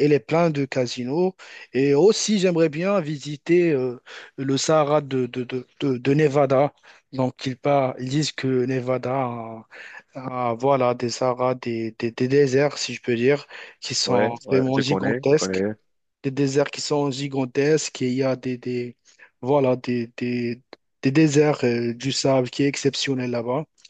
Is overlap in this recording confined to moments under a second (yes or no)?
no